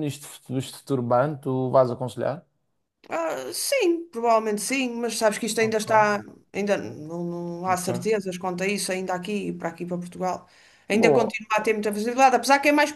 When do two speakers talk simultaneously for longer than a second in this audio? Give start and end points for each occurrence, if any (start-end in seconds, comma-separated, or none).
none